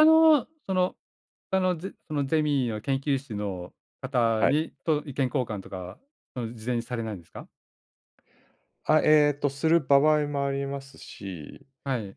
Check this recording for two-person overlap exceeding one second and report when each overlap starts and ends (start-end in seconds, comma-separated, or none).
none